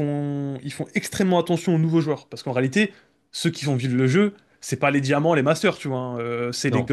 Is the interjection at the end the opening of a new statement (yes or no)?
no